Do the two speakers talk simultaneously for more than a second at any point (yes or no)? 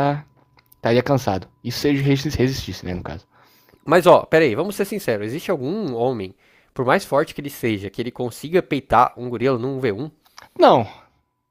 no